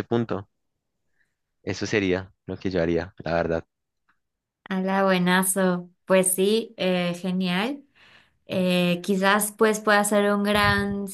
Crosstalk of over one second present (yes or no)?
no